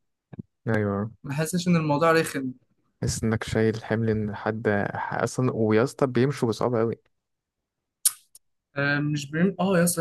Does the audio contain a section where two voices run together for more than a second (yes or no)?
no